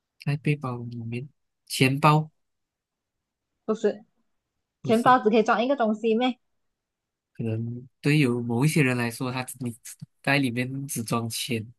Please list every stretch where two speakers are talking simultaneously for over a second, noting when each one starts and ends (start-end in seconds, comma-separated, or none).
none